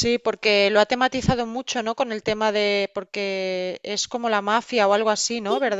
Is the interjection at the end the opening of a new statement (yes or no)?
yes